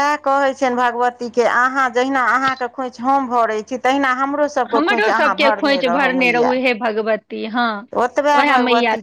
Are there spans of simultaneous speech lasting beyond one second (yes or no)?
yes